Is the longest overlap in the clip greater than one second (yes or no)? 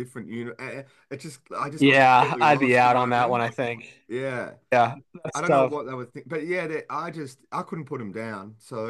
yes